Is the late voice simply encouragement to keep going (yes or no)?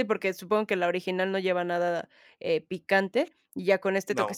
yes